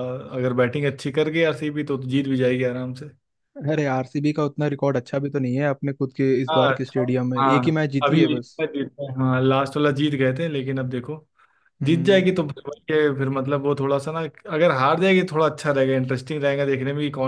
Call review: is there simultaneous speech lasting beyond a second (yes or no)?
yes